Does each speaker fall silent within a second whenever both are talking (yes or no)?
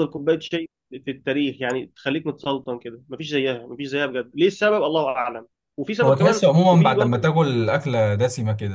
no